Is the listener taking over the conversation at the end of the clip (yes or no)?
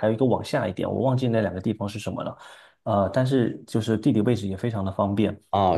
yes